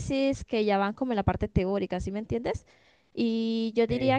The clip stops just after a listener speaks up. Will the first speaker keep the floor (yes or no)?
yes